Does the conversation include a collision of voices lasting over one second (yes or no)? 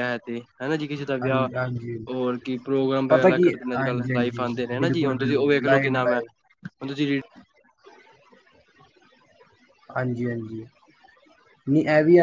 yes